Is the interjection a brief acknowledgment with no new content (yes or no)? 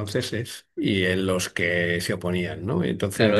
no